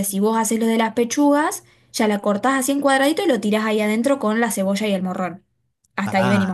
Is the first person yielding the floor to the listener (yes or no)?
yes